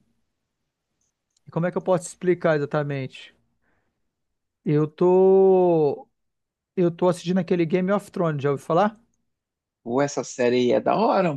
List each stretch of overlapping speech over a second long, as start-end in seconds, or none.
none